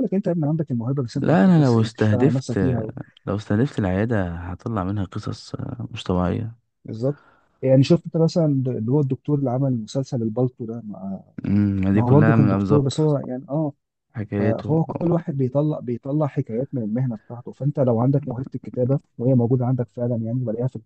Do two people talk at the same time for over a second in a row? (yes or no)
yes